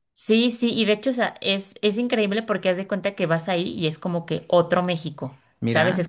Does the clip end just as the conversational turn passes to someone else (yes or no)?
no